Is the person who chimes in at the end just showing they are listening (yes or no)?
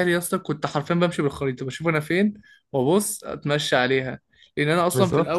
yes